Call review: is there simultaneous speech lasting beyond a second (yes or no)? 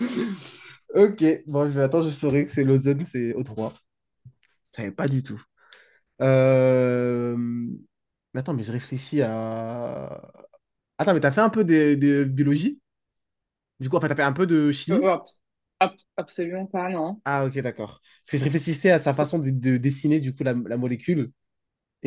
no